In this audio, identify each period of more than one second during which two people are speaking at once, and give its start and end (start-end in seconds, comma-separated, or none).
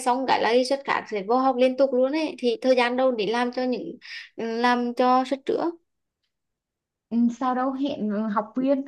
none